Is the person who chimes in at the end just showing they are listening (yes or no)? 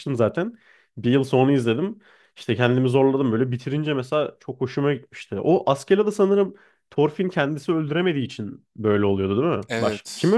no